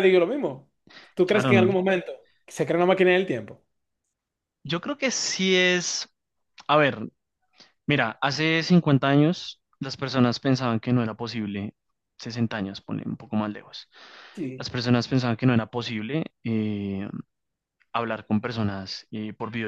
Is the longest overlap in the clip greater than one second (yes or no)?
no